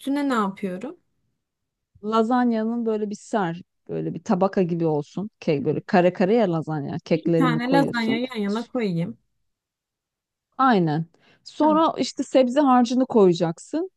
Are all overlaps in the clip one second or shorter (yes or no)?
no